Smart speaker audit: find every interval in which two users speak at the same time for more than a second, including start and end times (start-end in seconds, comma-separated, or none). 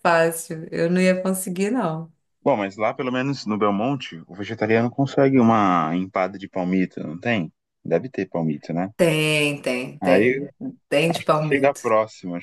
none